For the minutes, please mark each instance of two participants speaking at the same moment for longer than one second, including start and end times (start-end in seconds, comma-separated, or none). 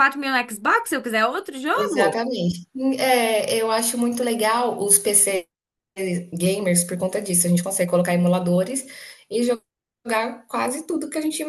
none